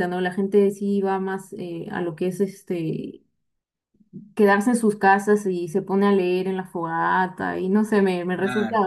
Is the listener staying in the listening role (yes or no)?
yes